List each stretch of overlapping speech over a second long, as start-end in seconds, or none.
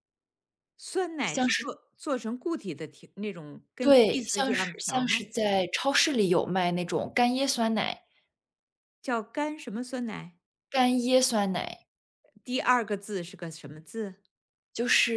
3.8-5.3